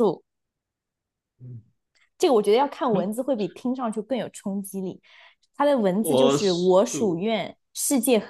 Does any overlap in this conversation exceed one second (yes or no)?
yes